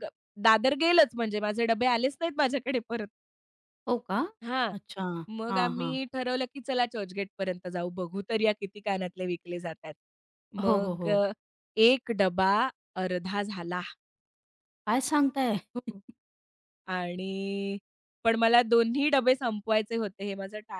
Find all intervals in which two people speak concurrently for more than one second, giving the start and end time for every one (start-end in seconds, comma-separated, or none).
none